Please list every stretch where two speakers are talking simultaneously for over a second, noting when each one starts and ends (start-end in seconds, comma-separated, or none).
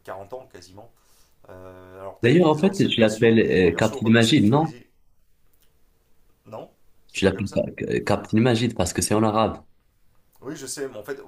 2.2-4.7